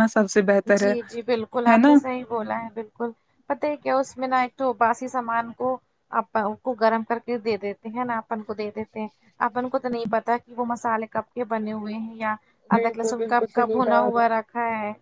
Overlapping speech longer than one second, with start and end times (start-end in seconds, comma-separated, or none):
12.8-14.2